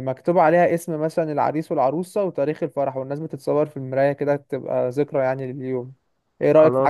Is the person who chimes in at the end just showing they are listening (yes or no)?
no